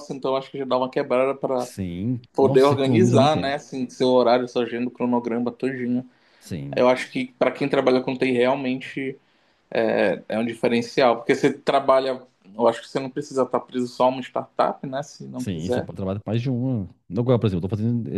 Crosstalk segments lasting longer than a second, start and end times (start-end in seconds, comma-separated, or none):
2.3-3.6